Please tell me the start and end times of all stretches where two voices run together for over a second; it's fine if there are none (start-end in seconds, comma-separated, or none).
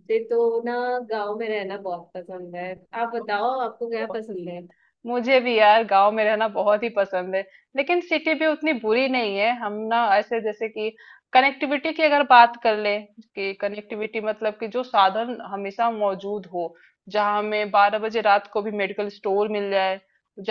none